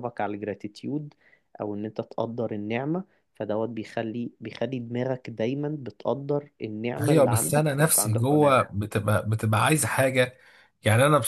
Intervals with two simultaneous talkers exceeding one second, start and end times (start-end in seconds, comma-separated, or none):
6.9-8.6